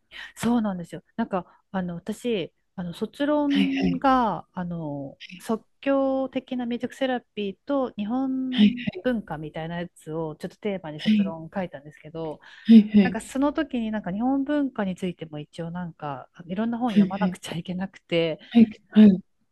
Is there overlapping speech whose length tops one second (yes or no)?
no